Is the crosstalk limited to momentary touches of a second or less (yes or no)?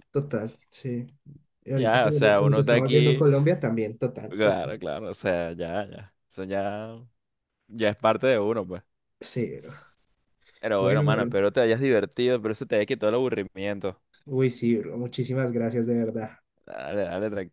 no